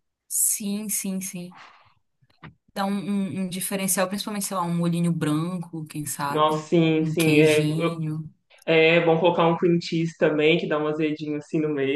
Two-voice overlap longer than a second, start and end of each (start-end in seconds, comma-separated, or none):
6.3-7.7